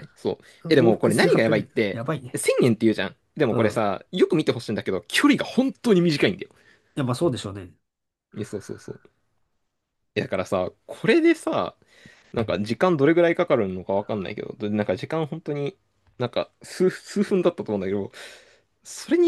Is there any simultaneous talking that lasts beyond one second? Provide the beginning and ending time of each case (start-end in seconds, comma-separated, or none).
0.7-2.4